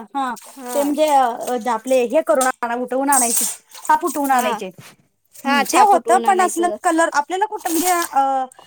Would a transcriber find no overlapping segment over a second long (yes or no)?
no